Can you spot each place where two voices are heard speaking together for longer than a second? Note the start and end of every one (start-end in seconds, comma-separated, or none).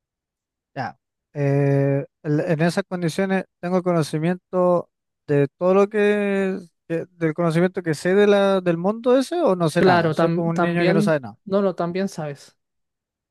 9.8-11.4